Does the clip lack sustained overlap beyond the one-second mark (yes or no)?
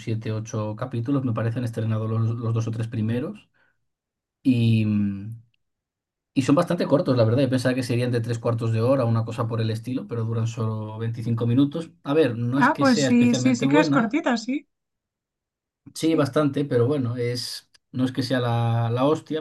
no